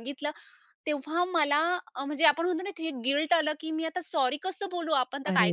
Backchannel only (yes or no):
no